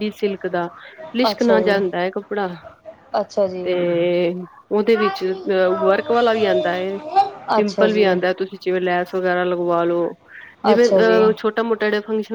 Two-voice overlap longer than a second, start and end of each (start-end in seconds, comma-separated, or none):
none